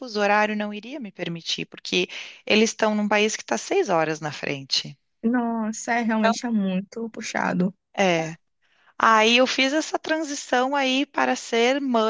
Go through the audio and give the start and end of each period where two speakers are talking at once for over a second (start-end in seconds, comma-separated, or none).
none